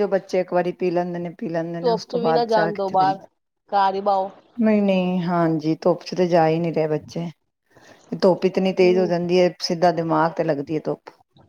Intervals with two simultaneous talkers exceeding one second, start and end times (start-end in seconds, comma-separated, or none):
1.8-3.2